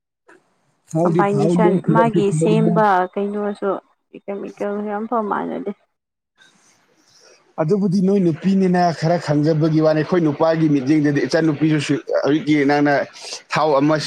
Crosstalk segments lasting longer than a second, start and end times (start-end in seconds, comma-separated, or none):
1.0-2.7